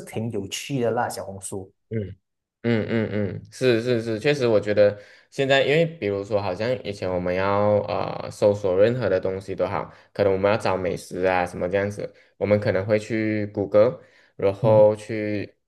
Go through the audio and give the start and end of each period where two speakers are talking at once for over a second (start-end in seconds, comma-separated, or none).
none